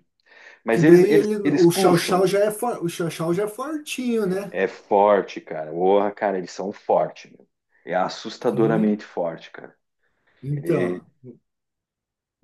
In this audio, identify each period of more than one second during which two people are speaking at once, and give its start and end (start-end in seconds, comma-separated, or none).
0.7-2.2